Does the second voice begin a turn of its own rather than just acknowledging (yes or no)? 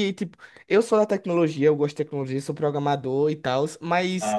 no